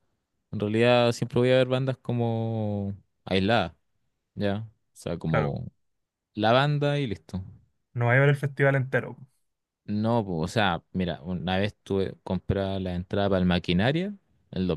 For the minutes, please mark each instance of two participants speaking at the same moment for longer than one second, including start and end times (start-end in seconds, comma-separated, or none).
none